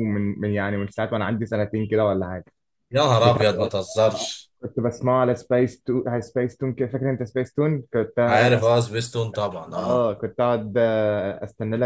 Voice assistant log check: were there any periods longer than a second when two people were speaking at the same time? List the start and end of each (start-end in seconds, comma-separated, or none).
none